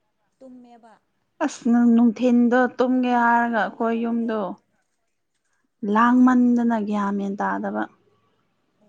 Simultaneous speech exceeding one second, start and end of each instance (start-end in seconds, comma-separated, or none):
2.9-4.3